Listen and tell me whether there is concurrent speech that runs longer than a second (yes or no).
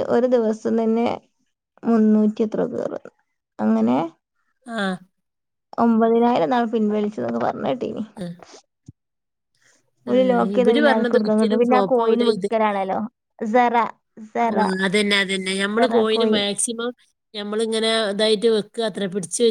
yes